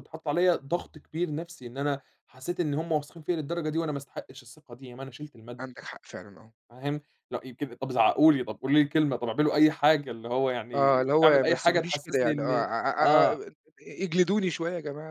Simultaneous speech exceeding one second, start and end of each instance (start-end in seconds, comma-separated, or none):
10.7-13.4